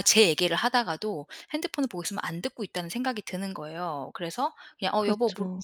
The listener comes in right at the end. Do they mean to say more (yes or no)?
no